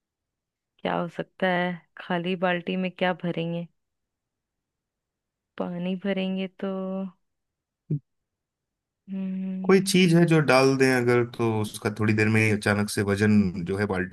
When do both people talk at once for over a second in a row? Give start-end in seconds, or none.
none